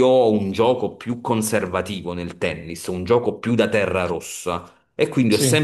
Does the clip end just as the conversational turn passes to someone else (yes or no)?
no